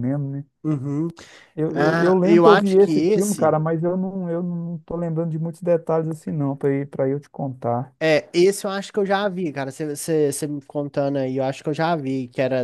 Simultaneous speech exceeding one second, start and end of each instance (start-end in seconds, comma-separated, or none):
1.7-3.5